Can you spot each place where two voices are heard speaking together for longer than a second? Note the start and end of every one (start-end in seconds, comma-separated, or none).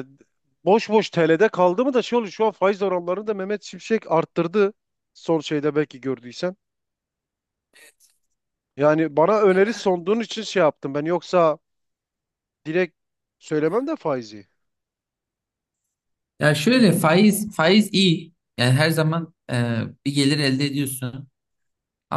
none